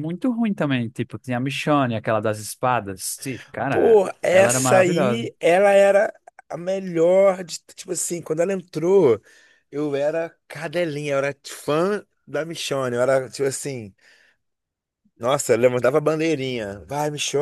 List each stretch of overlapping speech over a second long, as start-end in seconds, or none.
3.7-5.3